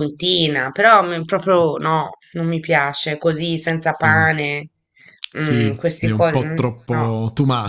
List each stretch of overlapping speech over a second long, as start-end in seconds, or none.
5.4-7.1